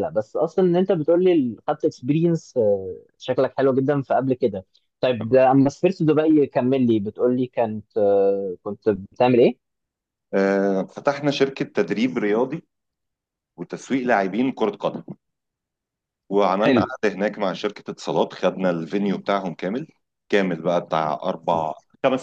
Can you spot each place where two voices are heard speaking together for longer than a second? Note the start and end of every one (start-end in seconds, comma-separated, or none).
none